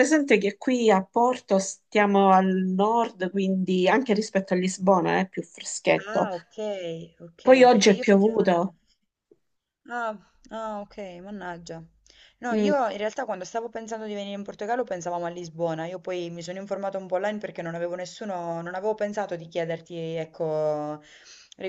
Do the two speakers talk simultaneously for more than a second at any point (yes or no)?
yes